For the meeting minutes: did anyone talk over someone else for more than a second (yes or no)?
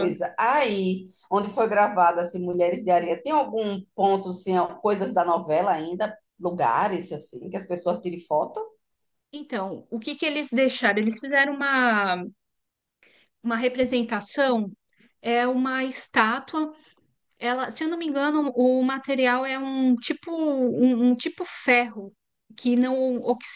no